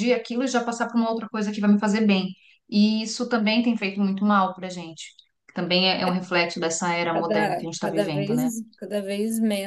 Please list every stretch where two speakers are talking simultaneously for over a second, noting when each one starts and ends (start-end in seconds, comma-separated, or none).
7.1-8.4